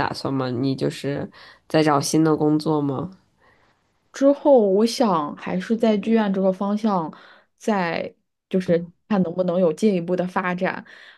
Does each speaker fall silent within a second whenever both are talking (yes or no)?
yes